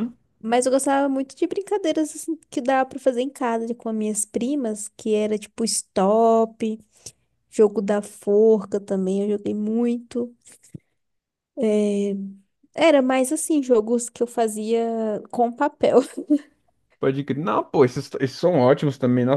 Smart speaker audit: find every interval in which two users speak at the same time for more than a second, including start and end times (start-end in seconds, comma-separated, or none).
none